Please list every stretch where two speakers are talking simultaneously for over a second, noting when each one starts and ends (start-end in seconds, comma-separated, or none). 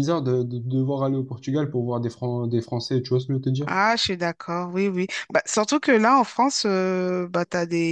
none